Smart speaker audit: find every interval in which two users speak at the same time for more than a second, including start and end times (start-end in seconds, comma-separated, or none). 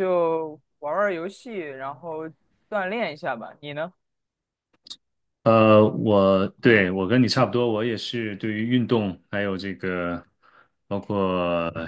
none